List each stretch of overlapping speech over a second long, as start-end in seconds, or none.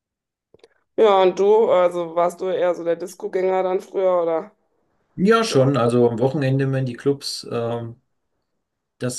none